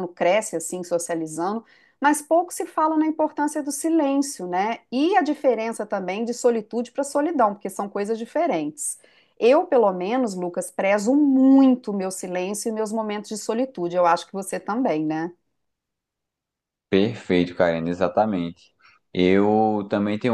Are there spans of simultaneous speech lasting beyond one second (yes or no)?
no